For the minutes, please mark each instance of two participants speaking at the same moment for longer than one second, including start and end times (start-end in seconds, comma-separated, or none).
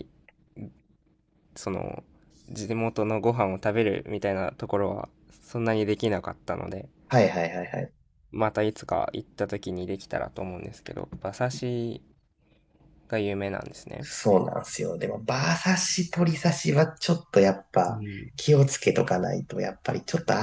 none